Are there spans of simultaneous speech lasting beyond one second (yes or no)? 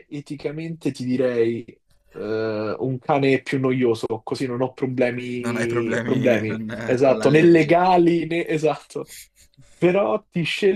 yes